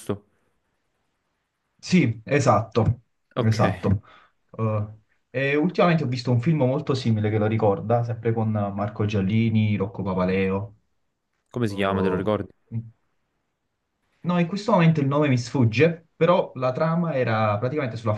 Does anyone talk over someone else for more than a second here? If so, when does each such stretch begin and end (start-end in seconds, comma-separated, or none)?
none